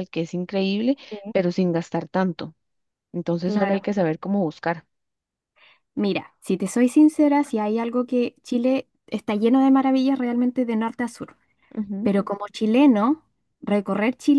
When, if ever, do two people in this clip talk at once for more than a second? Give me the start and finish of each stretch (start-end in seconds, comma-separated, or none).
none